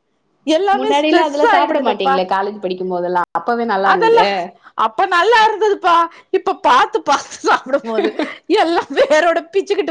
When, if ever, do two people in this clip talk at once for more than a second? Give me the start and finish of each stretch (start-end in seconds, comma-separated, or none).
0.8-2.1